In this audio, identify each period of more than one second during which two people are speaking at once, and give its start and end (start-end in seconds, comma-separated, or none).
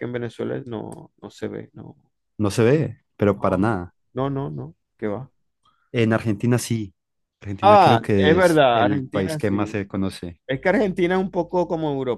7.6-9.8